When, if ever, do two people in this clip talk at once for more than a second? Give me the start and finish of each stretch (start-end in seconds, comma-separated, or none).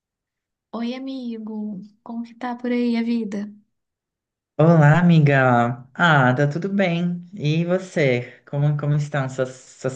none